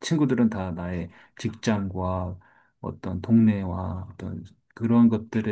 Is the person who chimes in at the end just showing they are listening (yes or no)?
yes